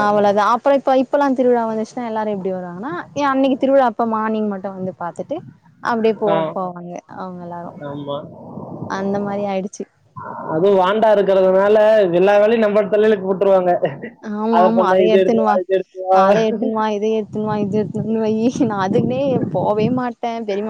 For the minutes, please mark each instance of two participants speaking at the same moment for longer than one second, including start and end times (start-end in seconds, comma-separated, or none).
none